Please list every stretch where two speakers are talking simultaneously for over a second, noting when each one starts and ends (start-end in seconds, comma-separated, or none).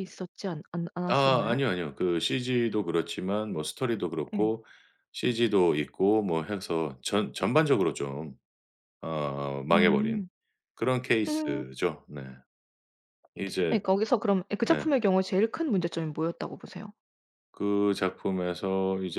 none